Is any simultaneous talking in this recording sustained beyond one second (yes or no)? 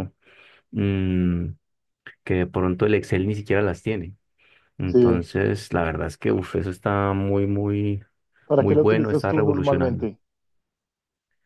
yes